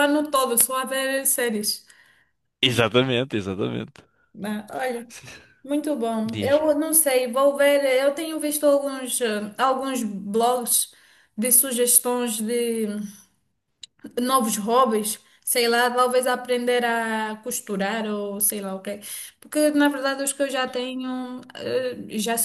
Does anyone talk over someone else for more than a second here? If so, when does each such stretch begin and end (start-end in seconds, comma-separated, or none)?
none